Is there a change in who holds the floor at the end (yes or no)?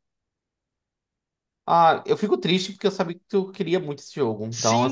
yes